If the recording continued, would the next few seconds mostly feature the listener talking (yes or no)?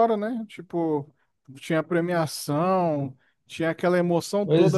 yes